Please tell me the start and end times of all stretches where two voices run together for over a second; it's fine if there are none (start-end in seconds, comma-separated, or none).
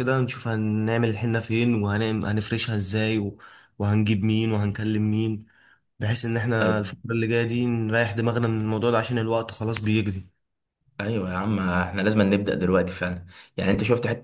none